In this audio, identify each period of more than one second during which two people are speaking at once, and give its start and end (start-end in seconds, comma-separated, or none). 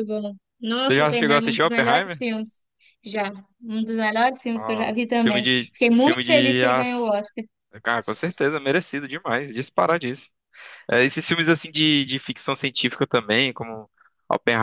0.9-2.2, 4.5-7.1